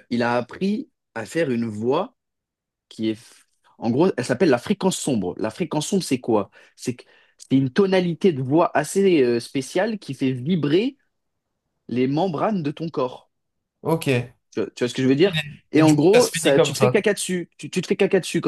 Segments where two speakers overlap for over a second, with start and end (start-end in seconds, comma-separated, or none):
15.8-17.0